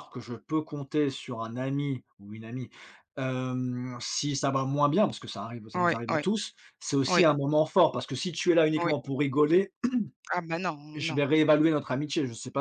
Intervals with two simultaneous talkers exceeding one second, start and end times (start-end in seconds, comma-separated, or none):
none